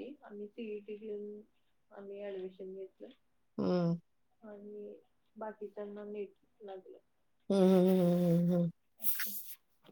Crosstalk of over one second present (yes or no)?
no